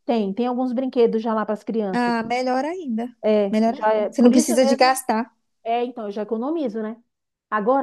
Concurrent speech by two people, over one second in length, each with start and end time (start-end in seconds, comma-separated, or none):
3.5-5.0